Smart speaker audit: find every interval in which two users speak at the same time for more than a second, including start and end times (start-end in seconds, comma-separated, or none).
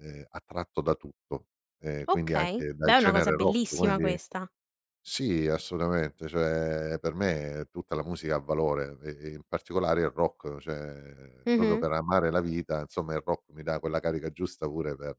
2.1-4.2